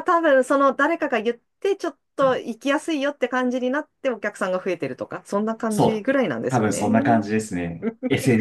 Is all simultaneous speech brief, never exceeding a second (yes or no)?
no